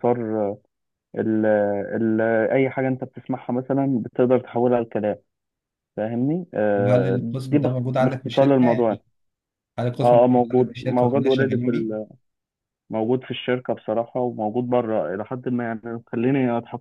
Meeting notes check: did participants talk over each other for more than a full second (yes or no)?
yes